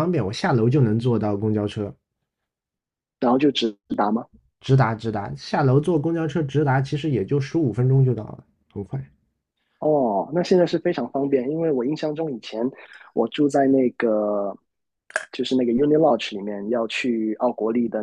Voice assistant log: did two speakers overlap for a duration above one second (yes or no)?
no